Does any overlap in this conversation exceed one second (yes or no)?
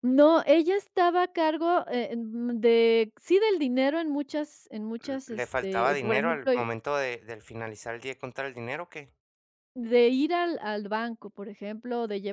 yes